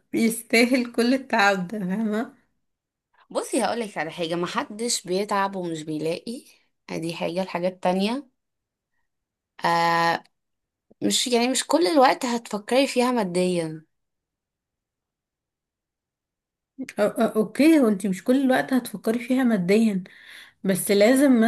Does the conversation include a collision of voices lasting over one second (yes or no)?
no